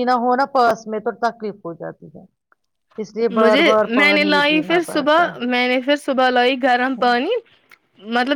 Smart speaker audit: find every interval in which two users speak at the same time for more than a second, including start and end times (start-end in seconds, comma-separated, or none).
3.4-5.3